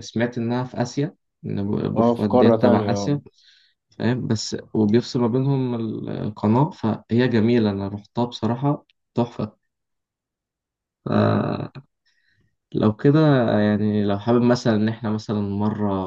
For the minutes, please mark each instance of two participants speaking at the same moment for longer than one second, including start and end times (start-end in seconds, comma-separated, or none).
2.0-3.2